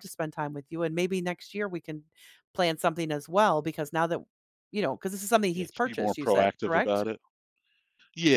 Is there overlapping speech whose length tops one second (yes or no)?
yes